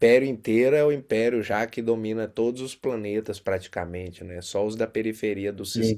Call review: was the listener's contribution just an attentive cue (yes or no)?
yes